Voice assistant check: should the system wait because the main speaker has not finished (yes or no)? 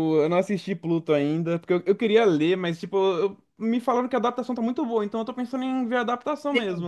no